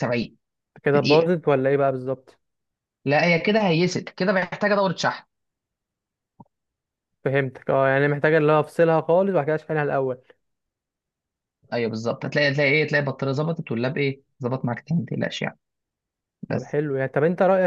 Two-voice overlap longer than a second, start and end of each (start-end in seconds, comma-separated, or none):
none